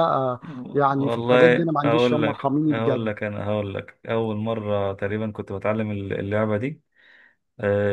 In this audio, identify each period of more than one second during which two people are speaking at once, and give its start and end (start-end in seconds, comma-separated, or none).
0.9-3.1